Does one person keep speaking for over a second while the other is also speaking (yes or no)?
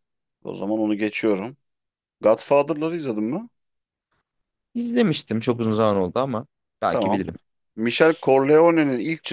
no